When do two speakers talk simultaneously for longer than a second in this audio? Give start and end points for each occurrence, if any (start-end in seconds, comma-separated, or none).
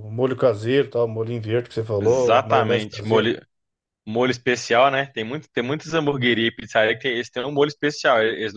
2.0-3.3